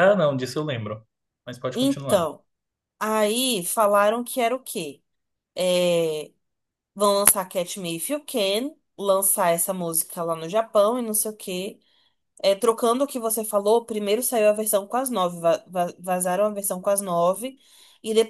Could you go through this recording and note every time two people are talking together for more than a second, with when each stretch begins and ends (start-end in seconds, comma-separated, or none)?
none